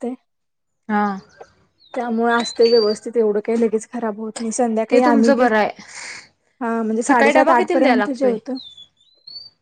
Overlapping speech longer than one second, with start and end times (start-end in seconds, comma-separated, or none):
7.0-8.3